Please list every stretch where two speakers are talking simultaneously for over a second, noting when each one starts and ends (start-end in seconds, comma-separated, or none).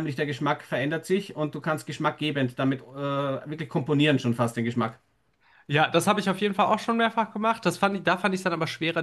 none